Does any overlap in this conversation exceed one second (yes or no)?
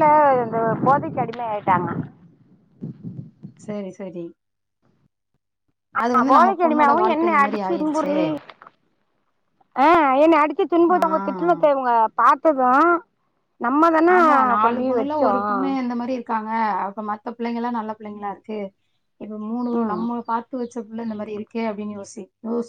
yes